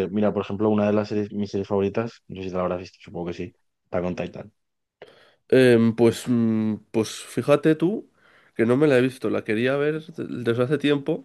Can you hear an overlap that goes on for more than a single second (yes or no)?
no